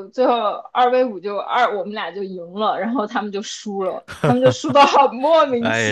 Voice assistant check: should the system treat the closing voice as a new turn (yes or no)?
yes